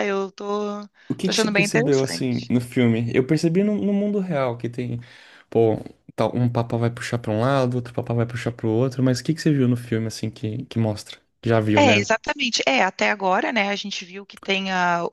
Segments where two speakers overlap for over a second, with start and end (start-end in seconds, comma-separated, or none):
1.2-2.5